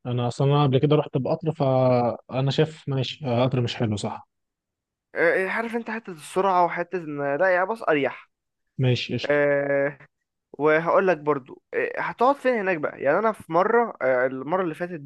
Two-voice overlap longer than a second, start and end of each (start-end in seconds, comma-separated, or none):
none